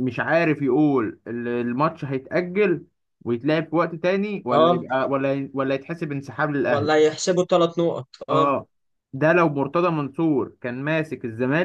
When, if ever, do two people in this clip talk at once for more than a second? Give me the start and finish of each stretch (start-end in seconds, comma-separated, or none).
none